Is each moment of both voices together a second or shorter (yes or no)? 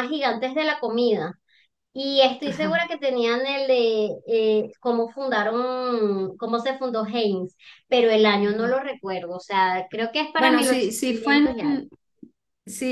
no